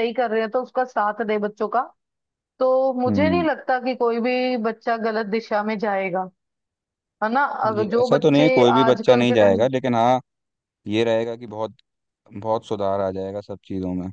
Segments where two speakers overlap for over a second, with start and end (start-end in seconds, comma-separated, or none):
7.8-9.7